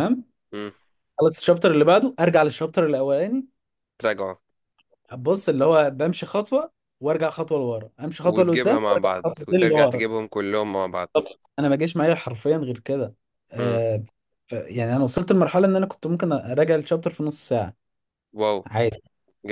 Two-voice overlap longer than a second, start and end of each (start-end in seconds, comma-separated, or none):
8.2-10.1